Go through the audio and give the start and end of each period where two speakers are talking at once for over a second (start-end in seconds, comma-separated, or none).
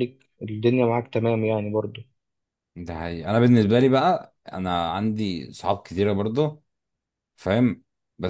none